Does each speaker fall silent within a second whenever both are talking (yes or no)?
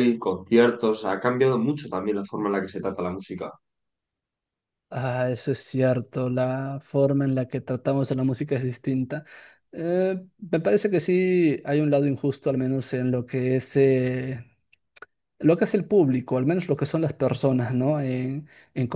yes